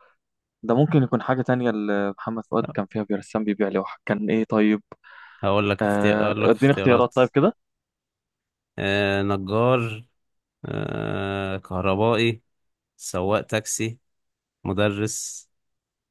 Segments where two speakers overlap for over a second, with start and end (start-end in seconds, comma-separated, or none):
5.8-7.1